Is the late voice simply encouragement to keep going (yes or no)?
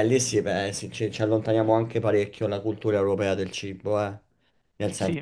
yes